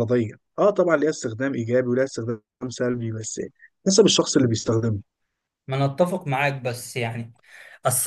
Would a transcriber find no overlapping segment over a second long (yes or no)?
yes